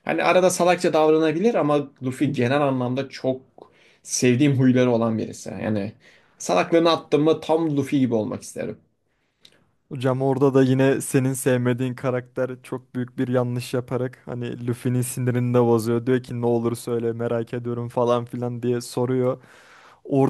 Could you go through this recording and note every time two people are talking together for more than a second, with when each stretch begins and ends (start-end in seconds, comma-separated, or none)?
none